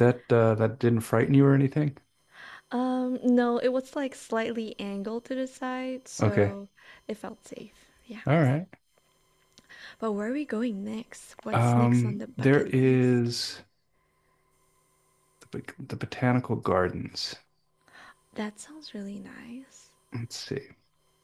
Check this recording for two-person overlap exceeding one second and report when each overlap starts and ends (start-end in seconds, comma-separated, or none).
11.5-13.3